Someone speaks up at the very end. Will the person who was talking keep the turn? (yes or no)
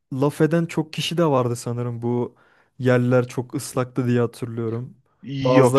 yes